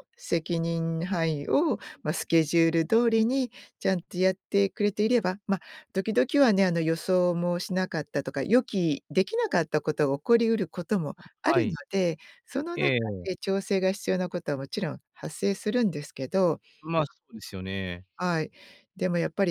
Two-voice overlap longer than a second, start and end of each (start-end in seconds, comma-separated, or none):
none